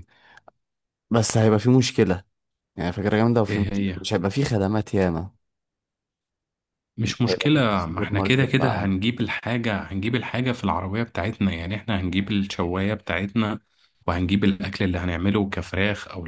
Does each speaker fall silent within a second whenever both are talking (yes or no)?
no